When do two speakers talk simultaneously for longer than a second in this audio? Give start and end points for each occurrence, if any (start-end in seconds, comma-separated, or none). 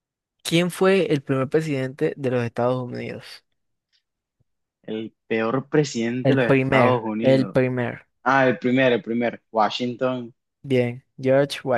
6.2-7.6